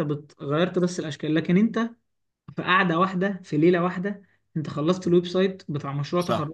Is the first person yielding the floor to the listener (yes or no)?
yes